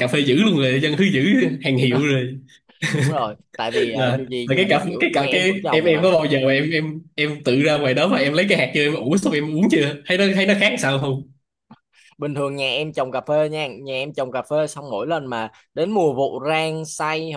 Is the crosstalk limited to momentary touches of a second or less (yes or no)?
no